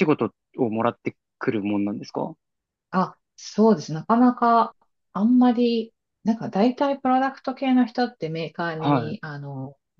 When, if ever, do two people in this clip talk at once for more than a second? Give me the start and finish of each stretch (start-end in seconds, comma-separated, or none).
none